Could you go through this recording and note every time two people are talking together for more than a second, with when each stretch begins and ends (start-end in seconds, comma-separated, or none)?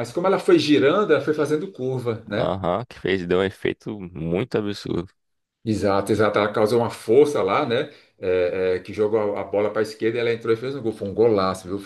none